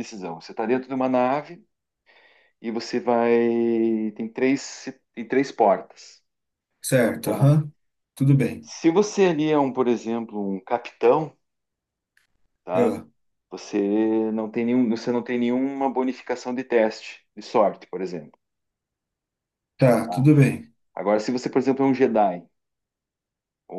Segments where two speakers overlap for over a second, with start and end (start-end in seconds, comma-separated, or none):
none